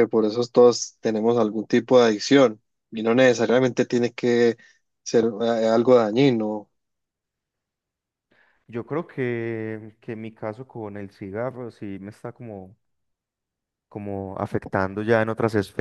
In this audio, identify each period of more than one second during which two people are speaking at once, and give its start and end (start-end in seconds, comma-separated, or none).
none